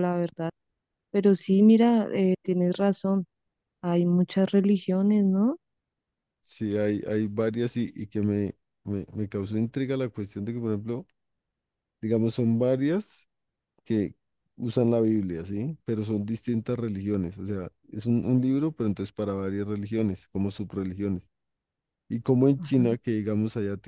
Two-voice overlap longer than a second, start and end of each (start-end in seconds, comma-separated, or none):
none